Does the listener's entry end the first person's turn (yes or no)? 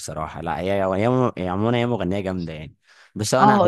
yes